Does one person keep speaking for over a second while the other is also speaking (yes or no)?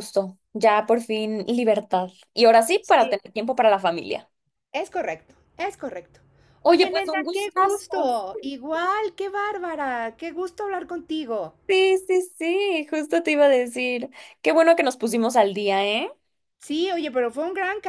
yes